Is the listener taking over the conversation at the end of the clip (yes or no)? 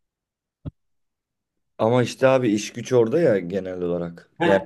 yes